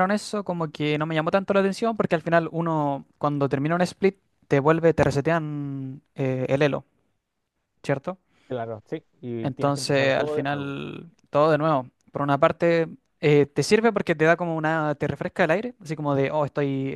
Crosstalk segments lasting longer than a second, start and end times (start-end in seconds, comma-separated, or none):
9.4-10.8